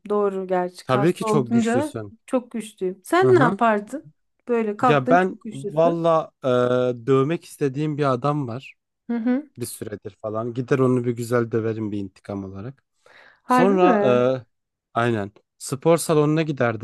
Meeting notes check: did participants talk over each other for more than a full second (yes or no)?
yes